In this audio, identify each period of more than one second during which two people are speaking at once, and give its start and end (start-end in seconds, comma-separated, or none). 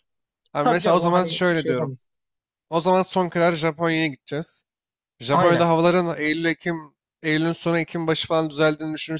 0.6-1.9